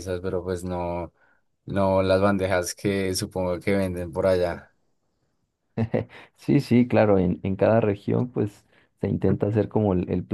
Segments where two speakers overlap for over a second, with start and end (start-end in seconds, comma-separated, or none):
none